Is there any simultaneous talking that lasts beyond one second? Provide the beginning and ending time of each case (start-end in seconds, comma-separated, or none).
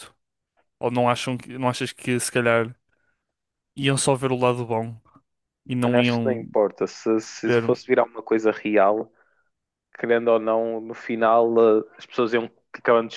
none